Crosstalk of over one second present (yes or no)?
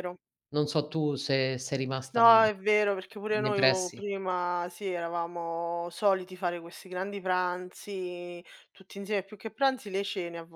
no